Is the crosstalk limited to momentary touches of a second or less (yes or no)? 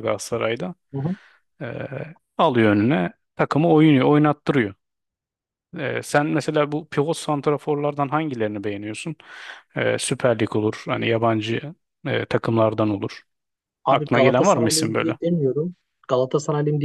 no